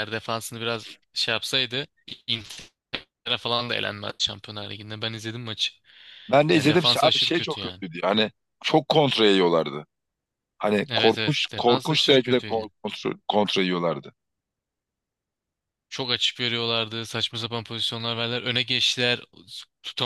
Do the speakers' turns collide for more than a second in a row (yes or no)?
yes